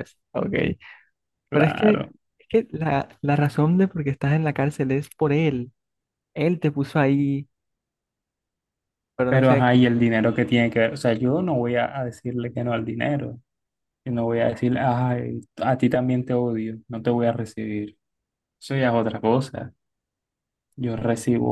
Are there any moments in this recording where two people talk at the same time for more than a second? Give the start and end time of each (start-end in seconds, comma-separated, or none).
none